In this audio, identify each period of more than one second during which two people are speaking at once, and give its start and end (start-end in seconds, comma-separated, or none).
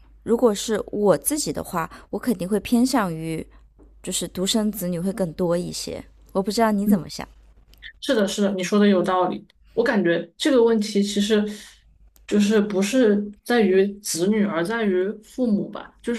none